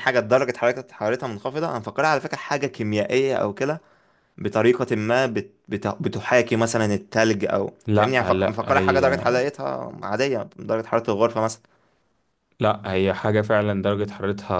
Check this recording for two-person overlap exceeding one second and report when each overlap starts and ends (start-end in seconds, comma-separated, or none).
7.8-9.2